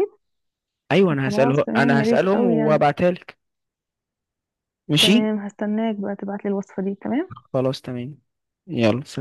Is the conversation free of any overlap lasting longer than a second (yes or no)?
no